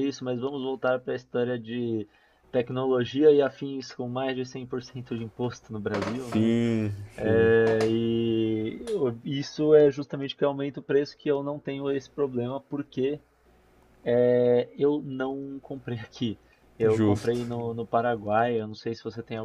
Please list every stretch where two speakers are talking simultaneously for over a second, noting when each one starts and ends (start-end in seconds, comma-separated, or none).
none